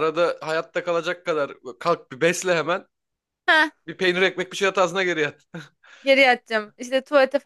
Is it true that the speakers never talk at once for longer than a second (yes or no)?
yes